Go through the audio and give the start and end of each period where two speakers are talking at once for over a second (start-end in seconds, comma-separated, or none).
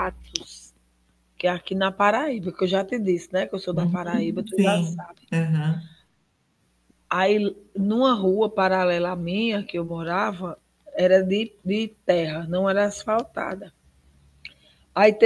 3.7-5.2